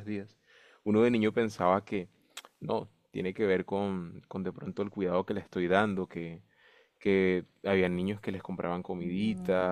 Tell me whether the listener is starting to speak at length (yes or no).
no